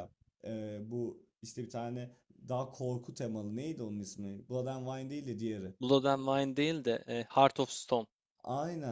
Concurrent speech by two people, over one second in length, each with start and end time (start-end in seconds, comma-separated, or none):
none